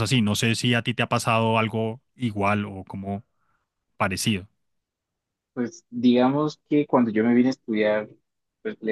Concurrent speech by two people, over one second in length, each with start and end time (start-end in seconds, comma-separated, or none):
none